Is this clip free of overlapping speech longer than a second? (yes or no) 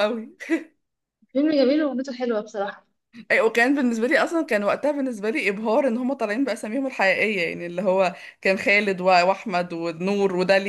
yes